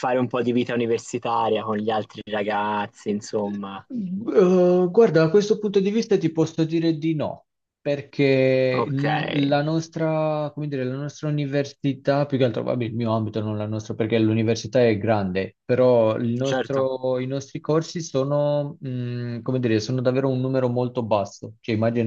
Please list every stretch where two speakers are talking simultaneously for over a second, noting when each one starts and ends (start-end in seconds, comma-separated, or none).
none